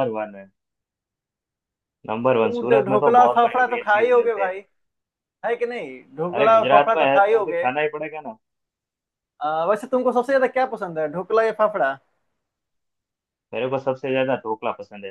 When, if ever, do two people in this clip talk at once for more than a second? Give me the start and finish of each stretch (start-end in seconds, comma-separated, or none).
2.4-4.5, 6.3-7.6